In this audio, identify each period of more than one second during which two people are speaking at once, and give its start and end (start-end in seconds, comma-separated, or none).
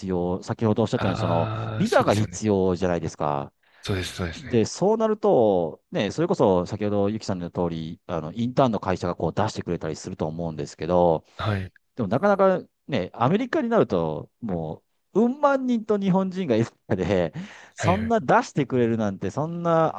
0.9-2.4